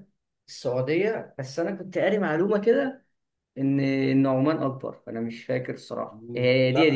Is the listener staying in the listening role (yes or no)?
no